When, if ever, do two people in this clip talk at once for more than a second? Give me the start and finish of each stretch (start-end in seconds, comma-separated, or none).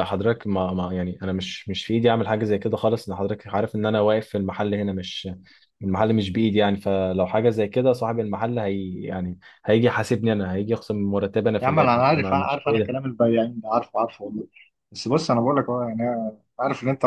11.6-12.9